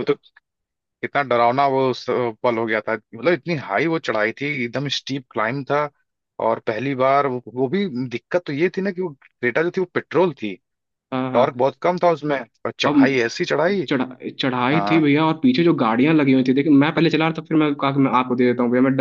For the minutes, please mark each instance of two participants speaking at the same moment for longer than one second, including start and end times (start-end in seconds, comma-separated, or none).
none